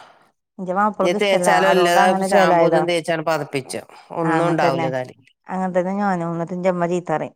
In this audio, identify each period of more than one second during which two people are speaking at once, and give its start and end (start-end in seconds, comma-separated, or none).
1.2-2.8